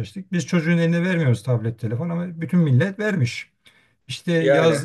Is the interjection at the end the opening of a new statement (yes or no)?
no